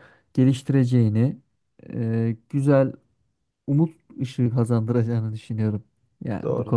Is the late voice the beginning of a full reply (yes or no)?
yes